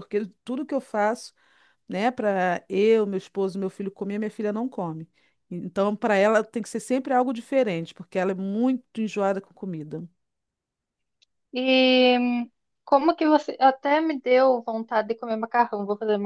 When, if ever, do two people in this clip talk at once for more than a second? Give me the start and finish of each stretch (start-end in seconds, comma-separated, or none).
none